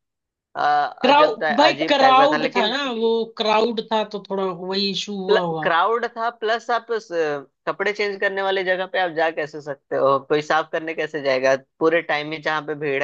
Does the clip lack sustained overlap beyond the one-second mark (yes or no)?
no